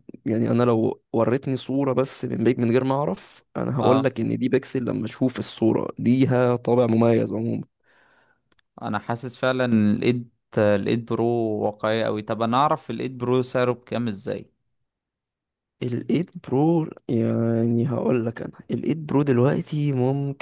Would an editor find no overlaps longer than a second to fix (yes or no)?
yes